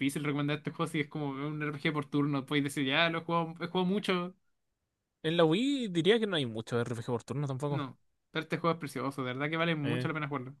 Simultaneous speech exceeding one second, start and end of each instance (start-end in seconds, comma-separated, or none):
none